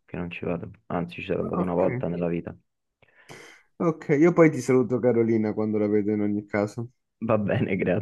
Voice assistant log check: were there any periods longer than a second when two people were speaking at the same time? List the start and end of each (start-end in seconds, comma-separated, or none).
none